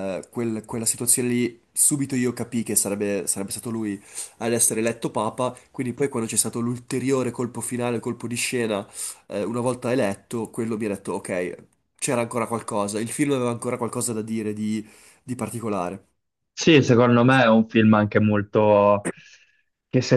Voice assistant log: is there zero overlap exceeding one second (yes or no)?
yes